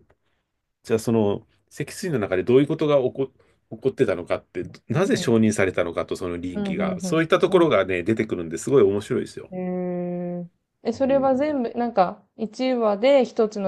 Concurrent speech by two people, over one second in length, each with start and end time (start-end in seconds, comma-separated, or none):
6.5-7.8